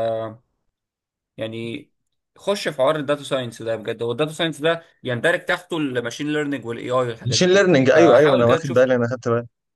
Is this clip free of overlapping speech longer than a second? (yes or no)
no